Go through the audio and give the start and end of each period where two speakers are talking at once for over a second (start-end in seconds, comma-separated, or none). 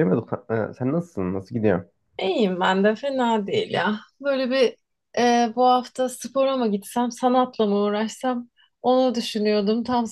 none